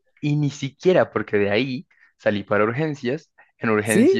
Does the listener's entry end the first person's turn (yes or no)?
no